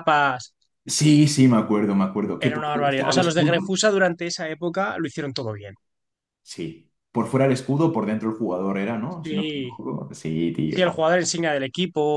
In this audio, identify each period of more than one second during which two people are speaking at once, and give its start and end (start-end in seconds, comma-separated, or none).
2.4-3.7